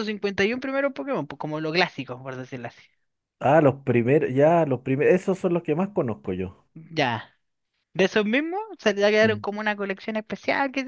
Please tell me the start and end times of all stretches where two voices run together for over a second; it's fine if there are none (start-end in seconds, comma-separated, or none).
none